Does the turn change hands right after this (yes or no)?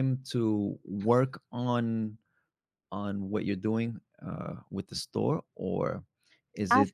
no